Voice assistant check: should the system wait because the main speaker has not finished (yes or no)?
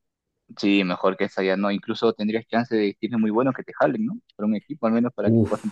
no